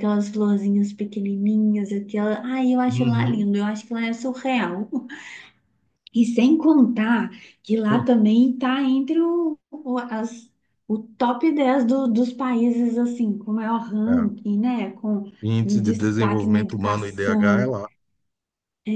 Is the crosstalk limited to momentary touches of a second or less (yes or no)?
no